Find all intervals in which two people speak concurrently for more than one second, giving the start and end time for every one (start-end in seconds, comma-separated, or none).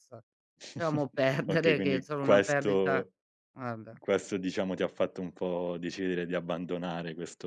1.5-3.1